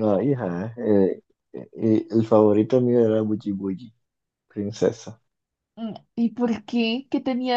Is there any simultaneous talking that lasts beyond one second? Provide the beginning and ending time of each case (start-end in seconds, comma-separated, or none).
none